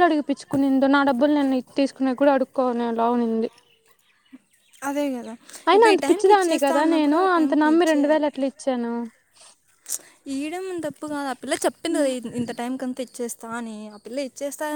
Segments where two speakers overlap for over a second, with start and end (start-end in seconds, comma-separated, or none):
5.7-7.7